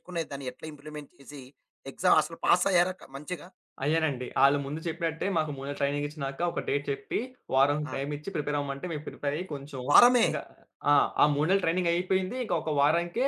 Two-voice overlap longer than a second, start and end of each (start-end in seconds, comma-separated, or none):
none